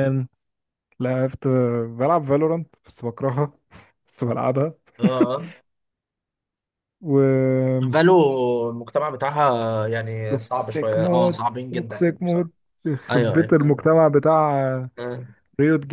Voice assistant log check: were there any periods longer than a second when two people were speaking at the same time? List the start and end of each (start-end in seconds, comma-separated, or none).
10.3-12.5